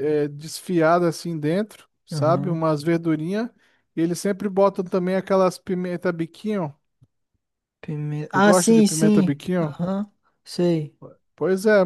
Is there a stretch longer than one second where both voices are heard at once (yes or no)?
yes